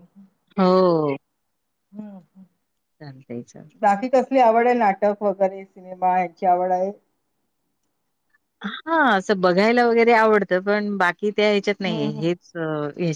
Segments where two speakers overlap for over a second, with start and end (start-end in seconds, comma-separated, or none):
none